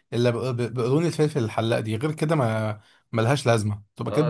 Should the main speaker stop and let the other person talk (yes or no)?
yes